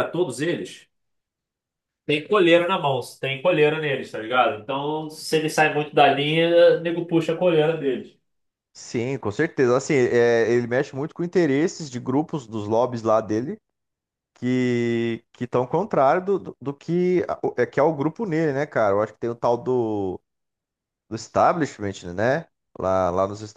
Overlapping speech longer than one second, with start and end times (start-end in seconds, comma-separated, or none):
none